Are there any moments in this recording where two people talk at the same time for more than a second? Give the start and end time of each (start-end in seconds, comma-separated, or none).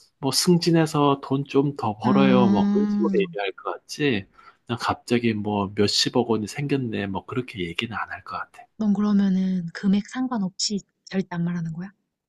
2.0-3.2